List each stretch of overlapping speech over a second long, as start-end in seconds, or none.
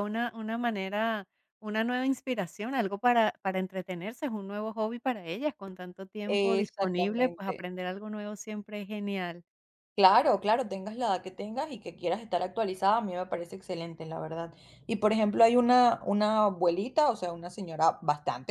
6.3-7.6